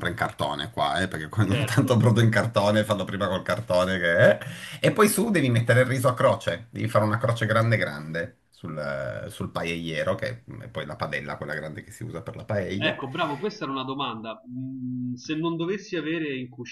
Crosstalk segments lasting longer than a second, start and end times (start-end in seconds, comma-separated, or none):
none